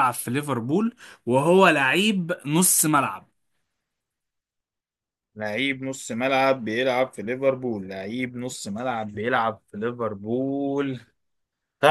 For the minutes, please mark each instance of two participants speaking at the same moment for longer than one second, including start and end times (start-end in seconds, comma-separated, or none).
none